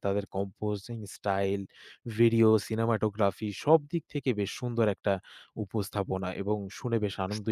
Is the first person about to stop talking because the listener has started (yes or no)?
yes